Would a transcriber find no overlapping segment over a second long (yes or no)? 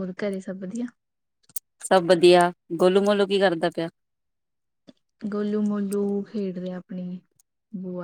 yes